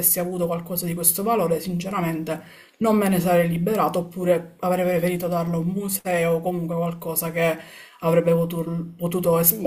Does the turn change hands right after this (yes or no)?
yes